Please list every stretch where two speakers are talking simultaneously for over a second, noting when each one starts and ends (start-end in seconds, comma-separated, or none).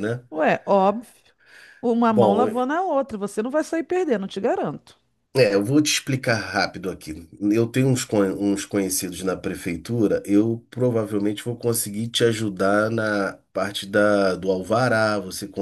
none